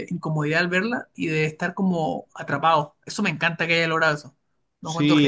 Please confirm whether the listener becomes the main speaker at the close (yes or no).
yes